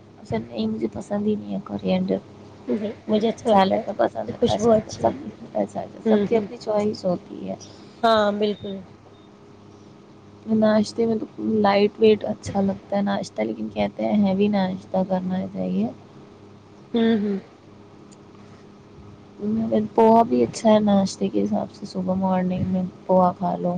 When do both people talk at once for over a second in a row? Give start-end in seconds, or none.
3.5-5.4